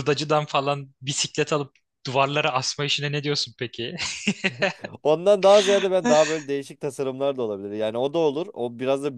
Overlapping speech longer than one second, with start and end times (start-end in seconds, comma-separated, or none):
none